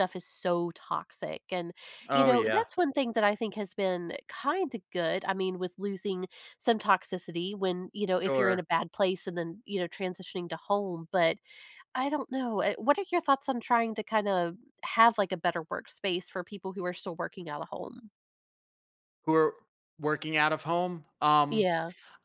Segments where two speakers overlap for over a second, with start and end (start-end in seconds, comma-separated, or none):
none